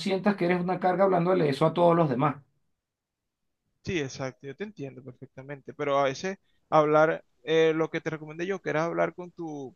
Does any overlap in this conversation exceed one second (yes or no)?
no